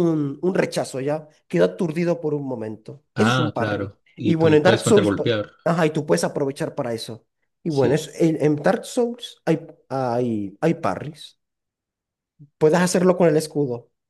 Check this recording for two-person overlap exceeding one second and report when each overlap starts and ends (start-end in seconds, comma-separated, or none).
3.1-5.3